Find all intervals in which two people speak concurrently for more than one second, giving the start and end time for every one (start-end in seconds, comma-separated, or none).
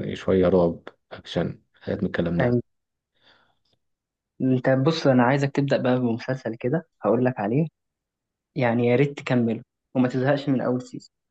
none